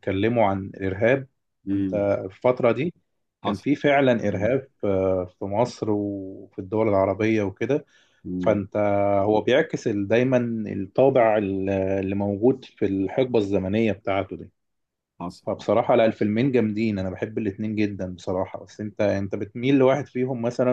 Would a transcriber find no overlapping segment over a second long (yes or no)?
yes